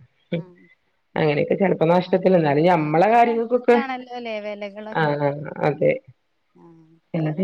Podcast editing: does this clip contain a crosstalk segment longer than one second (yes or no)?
yes